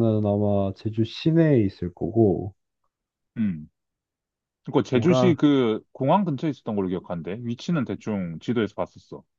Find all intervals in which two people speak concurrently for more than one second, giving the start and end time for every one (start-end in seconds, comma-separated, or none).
none